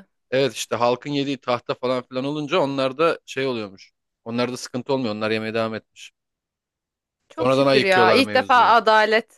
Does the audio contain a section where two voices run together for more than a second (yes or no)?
yes